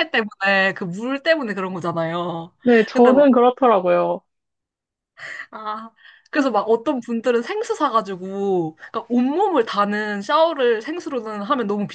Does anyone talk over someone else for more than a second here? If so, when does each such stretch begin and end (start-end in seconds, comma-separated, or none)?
none